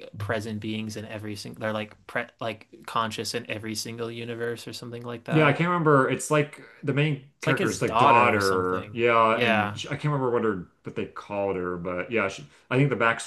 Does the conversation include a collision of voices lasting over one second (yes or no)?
yes